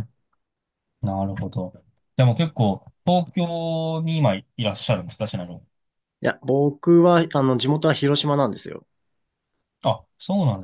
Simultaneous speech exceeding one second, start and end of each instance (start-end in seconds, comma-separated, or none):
none